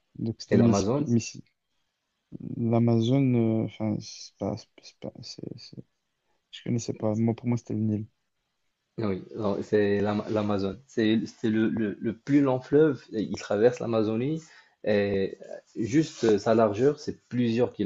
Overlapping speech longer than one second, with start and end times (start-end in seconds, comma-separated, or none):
none